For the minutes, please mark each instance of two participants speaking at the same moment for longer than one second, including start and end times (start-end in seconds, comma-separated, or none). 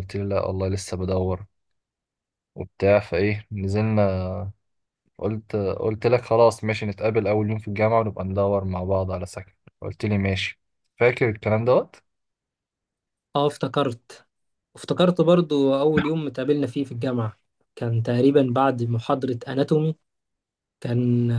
none